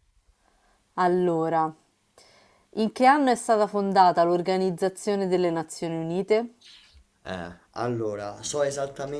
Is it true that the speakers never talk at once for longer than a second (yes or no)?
yes